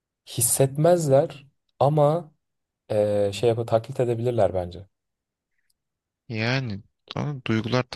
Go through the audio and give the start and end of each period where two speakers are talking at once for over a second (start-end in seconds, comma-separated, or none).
none